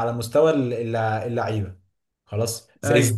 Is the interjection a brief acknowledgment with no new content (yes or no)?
yes